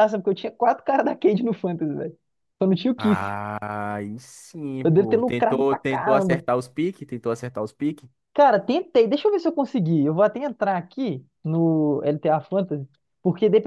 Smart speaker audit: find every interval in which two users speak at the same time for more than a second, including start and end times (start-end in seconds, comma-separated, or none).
4.8-6.4